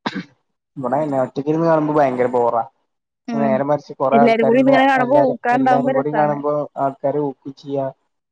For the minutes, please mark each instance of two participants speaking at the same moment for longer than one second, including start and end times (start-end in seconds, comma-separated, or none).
4.2-6.3